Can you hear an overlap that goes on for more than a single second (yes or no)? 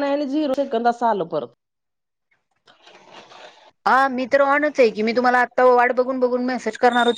no